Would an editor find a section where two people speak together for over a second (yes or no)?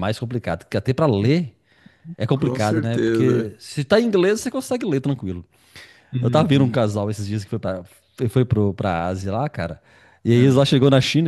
yes